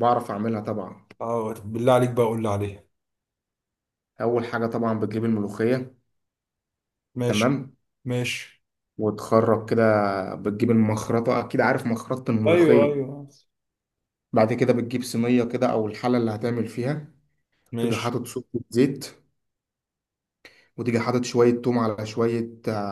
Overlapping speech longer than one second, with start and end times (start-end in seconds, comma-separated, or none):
none